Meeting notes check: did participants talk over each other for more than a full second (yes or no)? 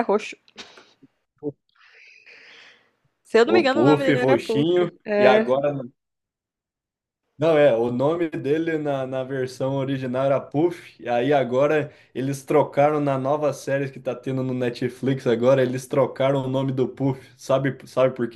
yes